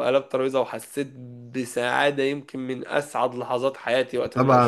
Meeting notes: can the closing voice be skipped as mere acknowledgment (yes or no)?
no